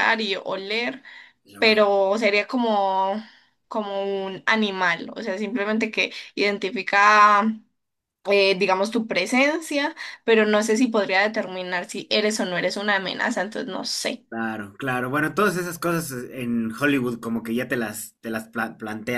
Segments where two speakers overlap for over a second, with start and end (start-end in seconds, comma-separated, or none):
none